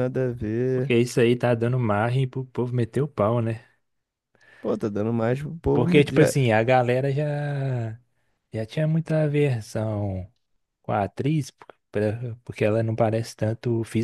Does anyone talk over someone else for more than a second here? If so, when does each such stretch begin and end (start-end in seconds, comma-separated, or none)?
none